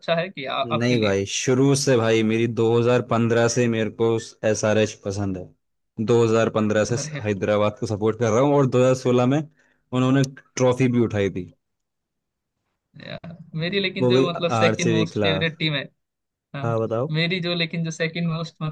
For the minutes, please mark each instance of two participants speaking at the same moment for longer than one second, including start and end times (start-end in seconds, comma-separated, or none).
14.0-15.5